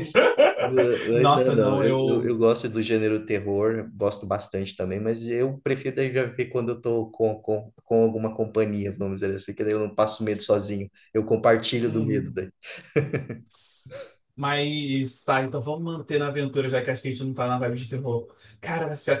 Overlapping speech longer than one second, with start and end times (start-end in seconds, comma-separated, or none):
1.1-2.3